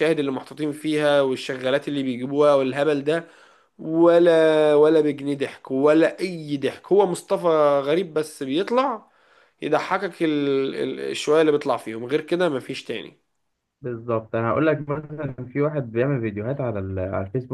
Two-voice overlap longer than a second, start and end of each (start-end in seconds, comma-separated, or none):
none